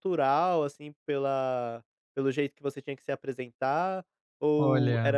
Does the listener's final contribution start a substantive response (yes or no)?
no